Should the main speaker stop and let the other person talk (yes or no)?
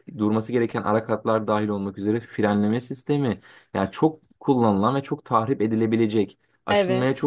no